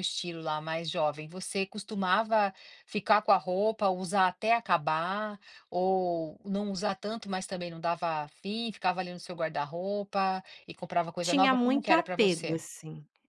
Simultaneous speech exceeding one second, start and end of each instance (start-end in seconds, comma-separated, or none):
11.2-12.6